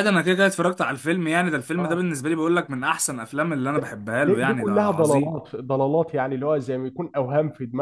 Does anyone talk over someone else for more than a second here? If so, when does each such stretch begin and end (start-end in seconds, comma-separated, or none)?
3.7-5.4